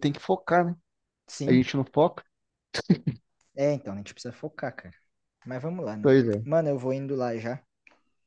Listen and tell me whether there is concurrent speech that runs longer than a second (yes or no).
no